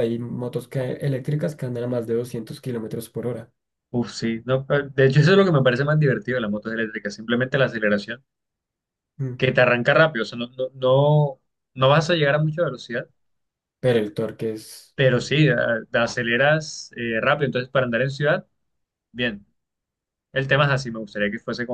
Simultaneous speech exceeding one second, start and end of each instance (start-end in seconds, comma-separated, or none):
none